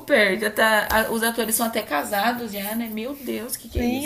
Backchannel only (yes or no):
no